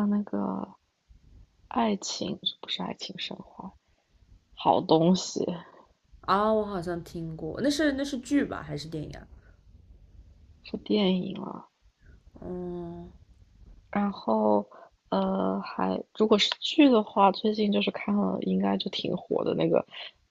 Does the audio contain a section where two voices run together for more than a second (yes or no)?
no